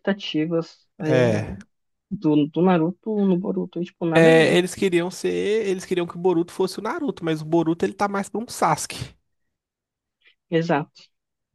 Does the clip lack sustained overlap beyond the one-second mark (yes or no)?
yes